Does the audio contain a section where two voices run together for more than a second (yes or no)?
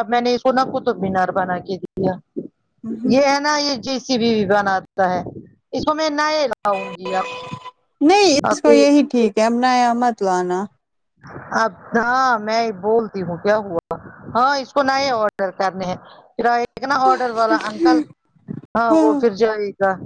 no